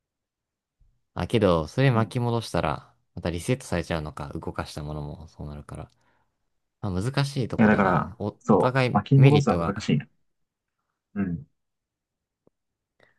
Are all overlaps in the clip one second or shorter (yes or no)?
no